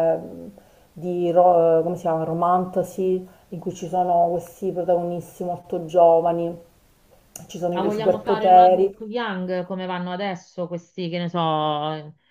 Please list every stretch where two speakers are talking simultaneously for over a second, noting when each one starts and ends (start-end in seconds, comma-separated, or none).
7.7-9.0